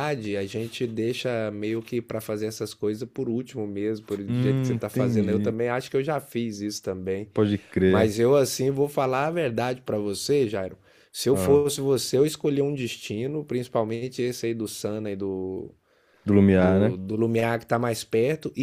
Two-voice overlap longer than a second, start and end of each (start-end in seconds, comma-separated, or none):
4.3-5.5